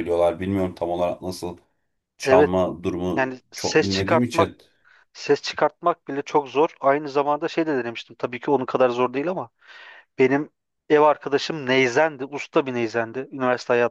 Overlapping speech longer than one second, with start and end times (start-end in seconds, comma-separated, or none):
3.2-4.5